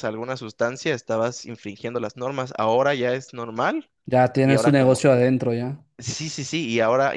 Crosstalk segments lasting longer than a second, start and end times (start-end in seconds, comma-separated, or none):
none